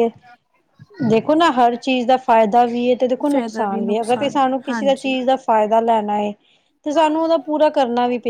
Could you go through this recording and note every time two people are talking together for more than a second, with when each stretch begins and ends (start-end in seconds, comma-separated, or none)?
3.3-5.1